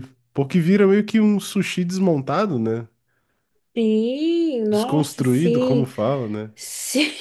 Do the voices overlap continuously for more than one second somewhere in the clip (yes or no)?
yes